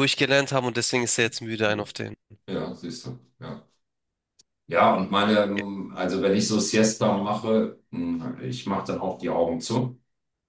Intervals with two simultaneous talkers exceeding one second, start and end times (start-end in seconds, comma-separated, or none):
none